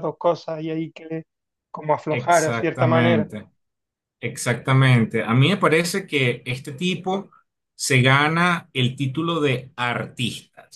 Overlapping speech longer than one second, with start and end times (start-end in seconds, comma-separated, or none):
2.1-3.3